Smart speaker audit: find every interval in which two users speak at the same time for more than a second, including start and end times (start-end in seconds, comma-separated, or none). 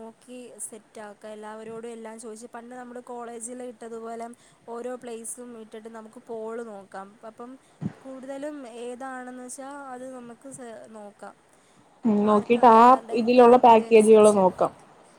12.3-14.4